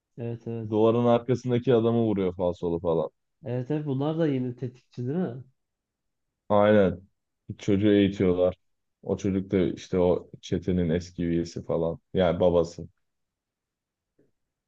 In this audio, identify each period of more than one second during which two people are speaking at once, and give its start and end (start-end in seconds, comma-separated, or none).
none